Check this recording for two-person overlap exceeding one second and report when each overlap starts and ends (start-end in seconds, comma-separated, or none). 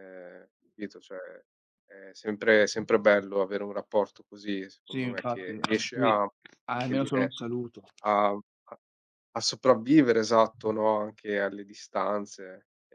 4.8-6.1